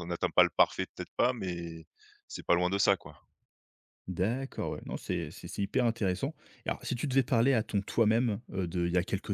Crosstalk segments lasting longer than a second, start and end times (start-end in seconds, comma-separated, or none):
none